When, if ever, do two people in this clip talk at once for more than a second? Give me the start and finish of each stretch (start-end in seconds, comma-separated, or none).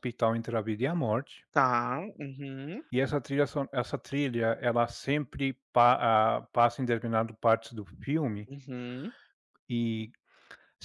none